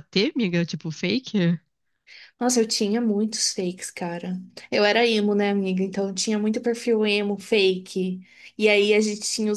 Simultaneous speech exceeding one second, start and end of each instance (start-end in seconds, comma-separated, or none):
none